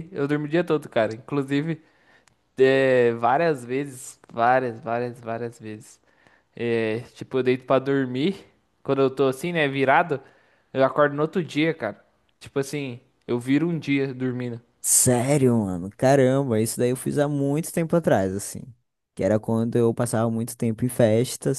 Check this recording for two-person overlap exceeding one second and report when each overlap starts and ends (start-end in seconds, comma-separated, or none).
none